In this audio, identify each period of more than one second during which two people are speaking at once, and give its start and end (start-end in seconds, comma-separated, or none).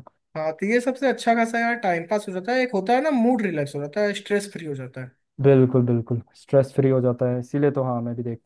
none